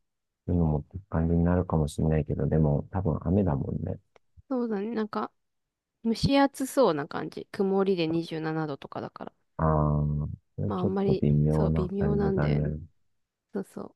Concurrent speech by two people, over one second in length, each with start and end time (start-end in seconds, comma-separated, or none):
10.7-12.7